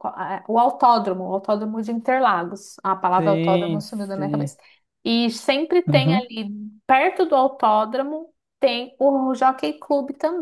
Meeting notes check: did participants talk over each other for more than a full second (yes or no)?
yes